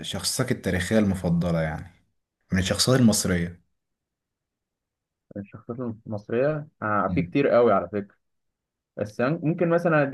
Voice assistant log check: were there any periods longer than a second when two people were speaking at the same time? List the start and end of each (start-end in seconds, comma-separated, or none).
none